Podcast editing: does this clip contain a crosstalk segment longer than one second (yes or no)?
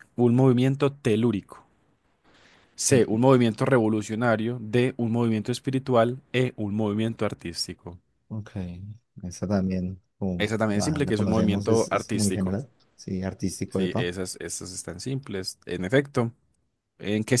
yes